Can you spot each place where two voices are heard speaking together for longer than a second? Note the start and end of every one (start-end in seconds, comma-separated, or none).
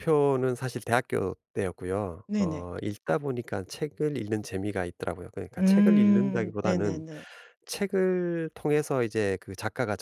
5.6-7.0